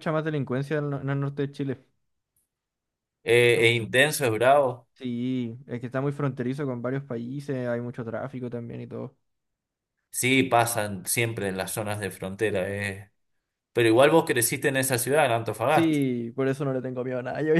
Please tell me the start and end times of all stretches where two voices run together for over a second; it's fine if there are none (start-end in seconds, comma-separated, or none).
none